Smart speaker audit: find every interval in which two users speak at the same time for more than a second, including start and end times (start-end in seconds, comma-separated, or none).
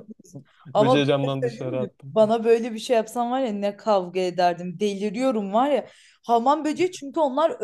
0.7-2.2